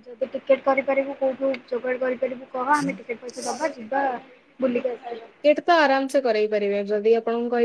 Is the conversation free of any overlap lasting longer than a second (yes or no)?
yes